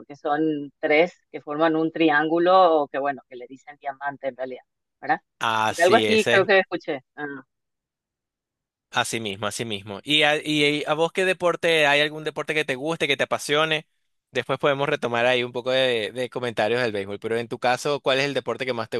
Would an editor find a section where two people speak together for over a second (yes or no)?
no